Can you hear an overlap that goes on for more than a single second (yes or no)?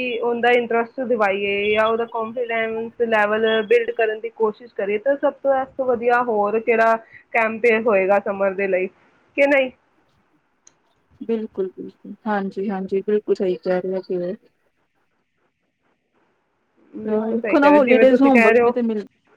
yes